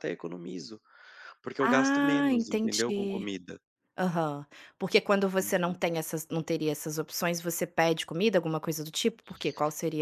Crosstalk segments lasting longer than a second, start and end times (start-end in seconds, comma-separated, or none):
1.6-3.3